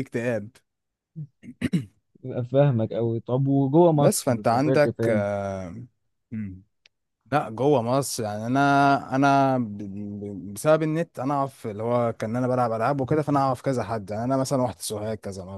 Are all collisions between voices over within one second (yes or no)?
no